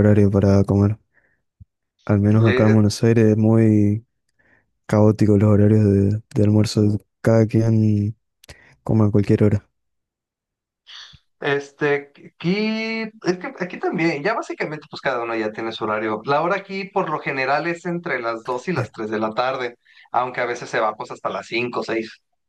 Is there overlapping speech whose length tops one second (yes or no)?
no